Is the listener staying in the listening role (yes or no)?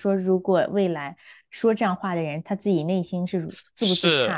no